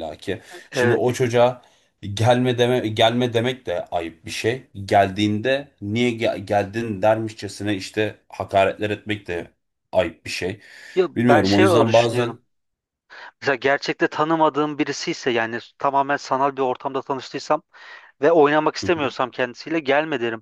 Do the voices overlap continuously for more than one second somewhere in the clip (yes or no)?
yes